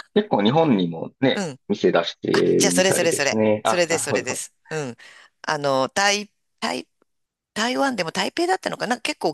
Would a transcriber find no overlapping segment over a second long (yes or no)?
no